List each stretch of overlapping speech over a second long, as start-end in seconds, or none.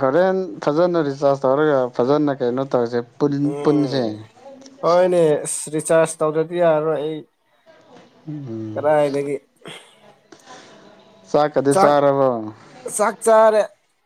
none